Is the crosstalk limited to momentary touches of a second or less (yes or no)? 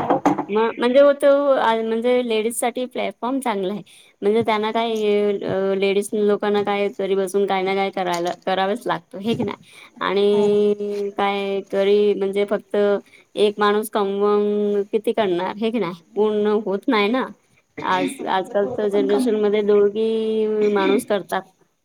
no